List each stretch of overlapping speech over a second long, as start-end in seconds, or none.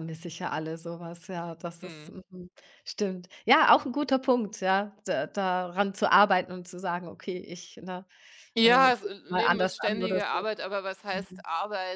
8.6-10.5